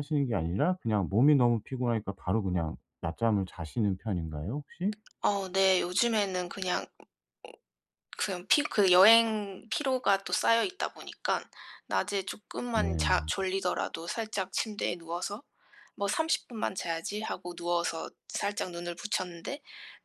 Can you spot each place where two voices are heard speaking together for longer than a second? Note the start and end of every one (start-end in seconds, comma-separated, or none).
none